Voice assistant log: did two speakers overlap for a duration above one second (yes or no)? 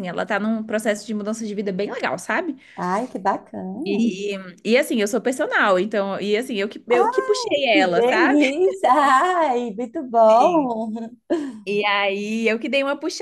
yes